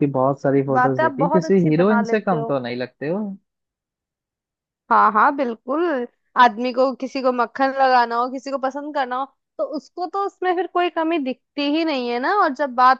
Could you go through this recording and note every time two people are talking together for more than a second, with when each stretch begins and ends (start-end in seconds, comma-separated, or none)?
0.7-2.5